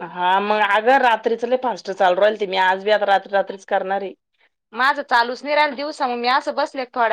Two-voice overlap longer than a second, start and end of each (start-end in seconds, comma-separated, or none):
none